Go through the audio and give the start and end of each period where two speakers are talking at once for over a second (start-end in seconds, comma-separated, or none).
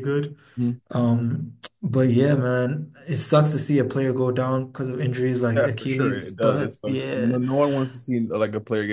5.5-7.4